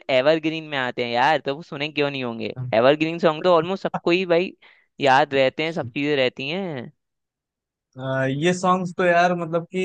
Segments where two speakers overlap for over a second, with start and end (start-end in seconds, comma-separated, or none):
none